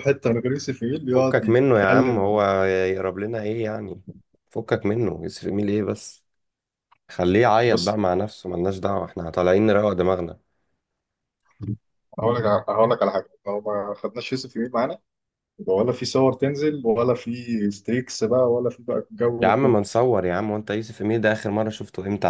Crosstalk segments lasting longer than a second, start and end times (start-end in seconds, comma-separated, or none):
1.1-2.4